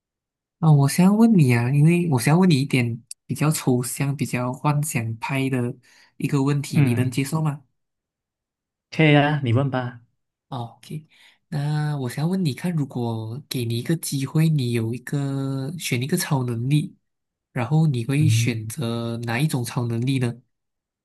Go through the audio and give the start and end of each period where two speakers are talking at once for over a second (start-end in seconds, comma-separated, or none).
none